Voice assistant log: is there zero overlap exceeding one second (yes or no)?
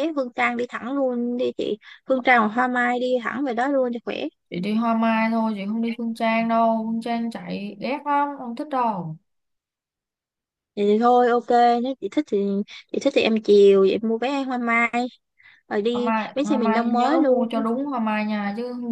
no